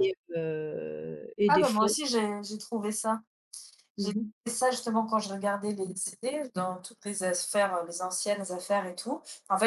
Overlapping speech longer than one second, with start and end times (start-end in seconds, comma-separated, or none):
none